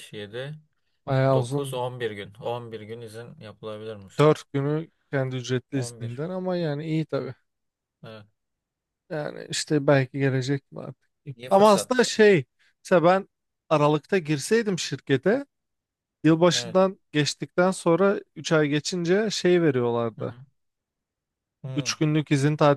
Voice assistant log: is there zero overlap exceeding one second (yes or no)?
yes